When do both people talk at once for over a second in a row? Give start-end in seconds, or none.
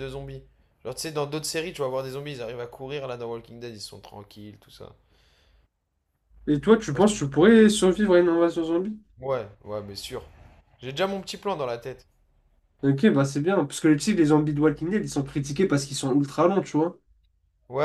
none